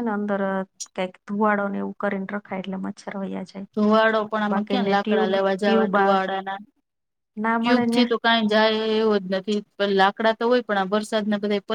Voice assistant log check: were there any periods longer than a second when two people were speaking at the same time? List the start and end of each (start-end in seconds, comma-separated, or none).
none